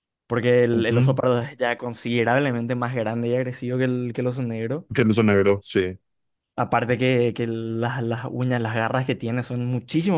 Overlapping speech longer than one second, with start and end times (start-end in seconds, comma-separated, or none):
none